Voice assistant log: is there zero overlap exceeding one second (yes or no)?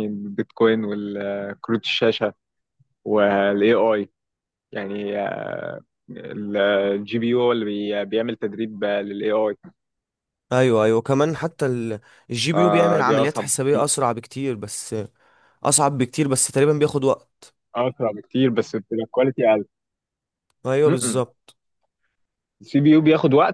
no